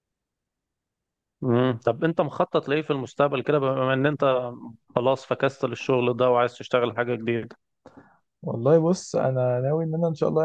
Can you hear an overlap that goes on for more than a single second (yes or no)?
no